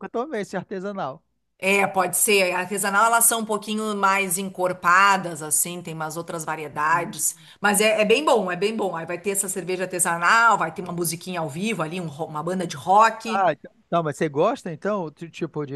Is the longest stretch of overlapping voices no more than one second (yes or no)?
yes